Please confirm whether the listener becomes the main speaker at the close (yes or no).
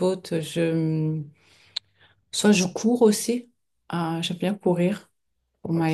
yes